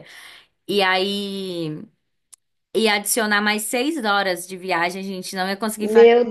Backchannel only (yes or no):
yes